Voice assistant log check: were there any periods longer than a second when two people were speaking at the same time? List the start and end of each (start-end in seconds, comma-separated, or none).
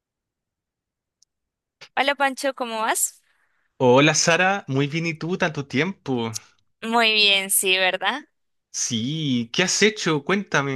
none